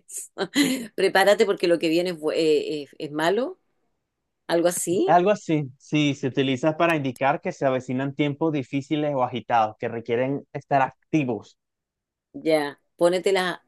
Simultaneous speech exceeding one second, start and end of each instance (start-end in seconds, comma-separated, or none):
none